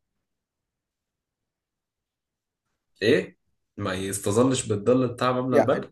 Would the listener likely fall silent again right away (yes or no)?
no